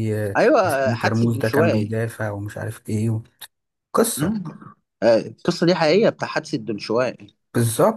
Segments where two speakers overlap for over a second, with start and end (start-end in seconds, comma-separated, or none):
0.6-1.9